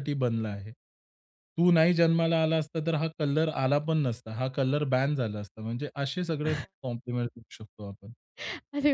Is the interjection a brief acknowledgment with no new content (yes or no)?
no